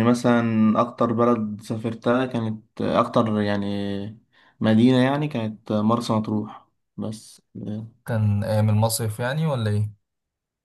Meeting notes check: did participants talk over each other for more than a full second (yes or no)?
no